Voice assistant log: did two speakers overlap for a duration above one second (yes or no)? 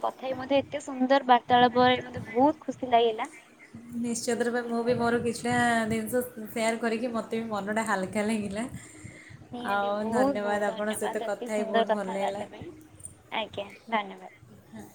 yes